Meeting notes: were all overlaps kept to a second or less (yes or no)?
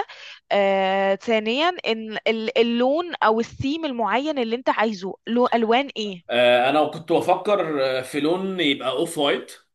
yes